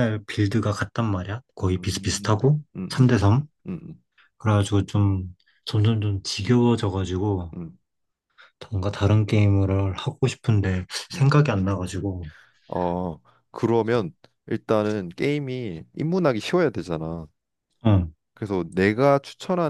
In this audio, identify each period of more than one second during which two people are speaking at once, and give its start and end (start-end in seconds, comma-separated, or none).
1.6-3.5